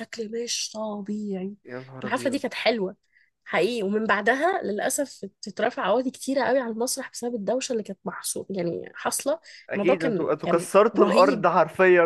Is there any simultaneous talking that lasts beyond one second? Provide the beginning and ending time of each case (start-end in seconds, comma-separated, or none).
9.8-11.4